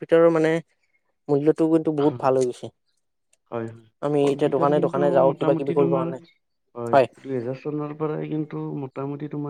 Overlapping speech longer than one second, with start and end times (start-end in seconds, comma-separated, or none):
4.2-6.2